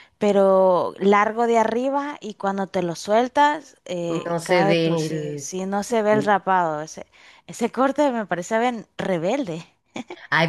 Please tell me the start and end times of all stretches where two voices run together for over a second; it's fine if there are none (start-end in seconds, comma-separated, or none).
4.1-5.5